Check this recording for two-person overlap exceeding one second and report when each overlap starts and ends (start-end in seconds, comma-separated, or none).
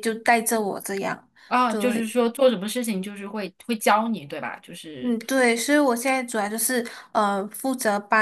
none